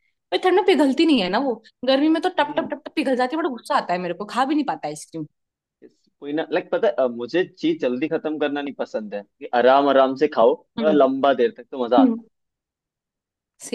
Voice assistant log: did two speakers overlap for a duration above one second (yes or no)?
no